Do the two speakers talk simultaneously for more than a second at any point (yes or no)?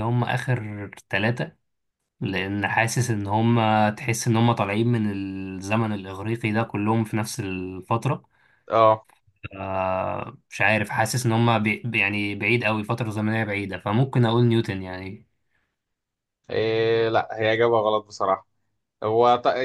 no